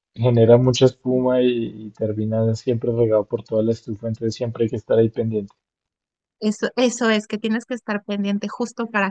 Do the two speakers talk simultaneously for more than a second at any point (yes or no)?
no